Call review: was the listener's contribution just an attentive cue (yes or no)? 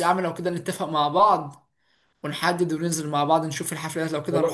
no